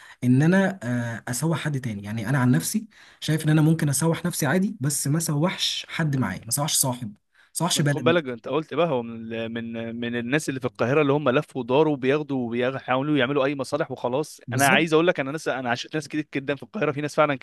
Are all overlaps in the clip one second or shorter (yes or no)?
yes